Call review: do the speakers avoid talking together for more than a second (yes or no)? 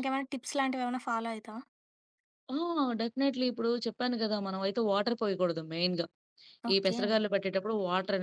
yes